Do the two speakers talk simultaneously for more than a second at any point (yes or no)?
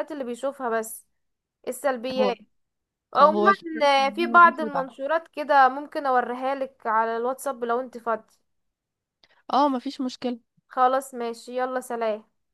yes